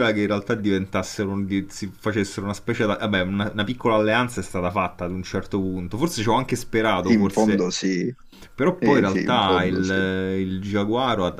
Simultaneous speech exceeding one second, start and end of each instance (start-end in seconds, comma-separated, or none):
8.8-10.0